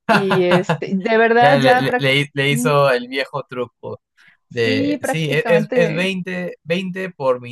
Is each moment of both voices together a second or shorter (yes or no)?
no